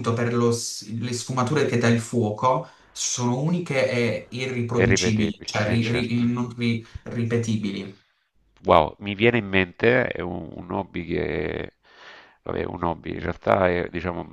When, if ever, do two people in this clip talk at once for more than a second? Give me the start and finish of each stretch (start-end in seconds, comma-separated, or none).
4.7-6.2